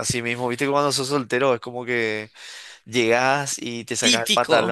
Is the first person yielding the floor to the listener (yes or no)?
no